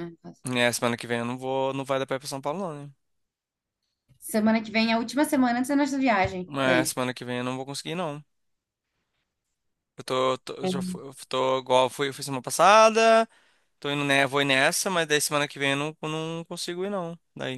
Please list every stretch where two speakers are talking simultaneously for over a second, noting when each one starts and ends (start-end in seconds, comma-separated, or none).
none